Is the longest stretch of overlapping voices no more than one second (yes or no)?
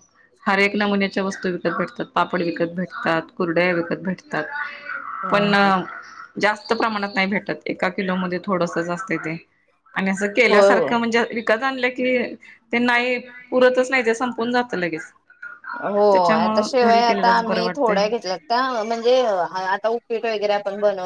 no